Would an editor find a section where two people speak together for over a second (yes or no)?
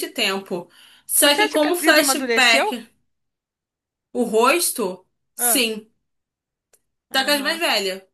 yes